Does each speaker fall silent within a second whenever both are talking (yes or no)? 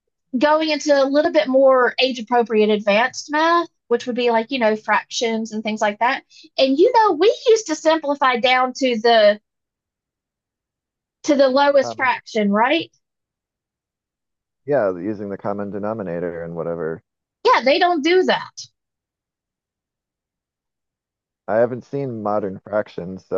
yes